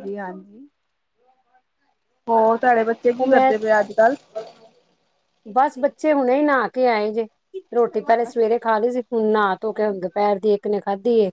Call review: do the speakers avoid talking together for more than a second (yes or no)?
yes